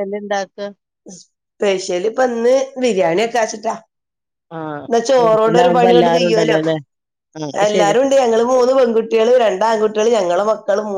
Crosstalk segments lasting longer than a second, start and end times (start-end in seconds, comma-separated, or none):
5.2-6.6